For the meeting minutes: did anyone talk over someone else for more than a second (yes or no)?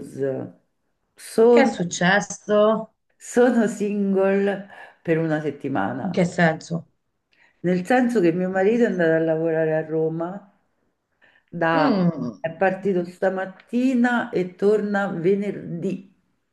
no